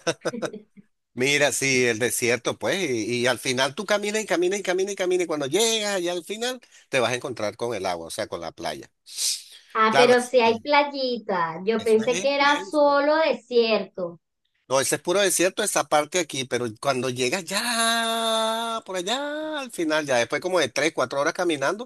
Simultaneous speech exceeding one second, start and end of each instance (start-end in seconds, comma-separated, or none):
11.8-13.0